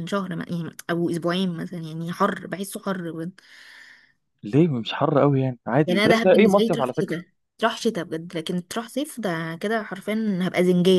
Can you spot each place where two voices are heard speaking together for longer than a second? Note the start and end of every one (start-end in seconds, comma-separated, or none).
5.8-7.2